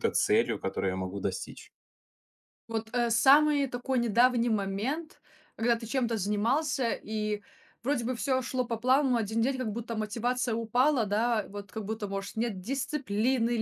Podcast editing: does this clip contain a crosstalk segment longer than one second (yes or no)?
no